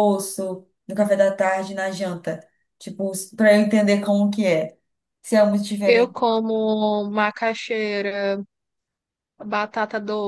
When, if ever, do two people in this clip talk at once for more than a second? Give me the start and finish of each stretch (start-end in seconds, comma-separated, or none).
none